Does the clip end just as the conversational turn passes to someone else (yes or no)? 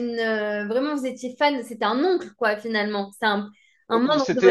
yes